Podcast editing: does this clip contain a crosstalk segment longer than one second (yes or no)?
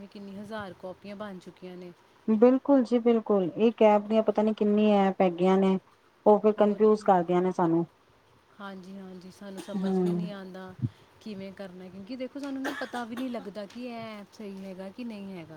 no